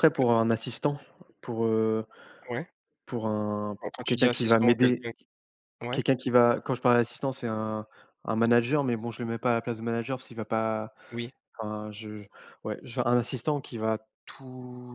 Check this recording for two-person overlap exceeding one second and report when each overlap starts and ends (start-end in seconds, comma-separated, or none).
3.8-5.1